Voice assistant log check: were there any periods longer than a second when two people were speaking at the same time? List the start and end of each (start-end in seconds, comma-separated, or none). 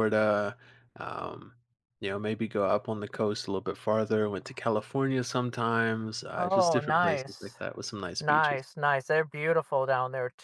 6.4-7.6